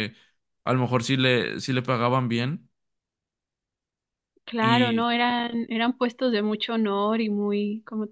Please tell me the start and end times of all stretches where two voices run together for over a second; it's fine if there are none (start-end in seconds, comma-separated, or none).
none